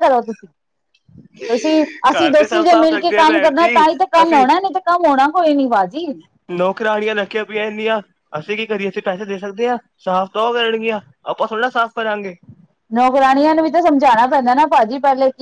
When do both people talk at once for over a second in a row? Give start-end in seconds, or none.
2.1-3.5